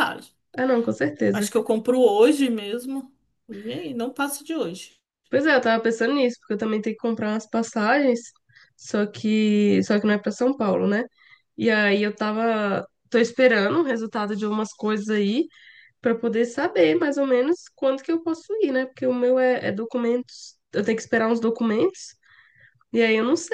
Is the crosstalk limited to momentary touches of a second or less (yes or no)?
yes